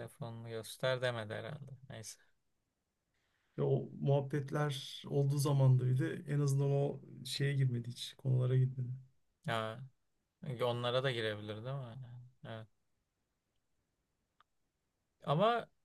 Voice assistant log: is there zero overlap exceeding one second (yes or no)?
yes